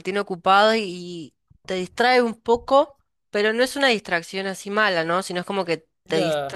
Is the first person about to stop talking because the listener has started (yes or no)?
no